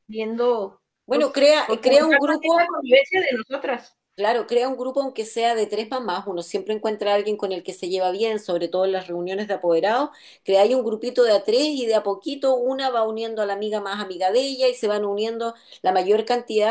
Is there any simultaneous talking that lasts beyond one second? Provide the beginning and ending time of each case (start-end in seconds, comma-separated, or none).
1.1-2.7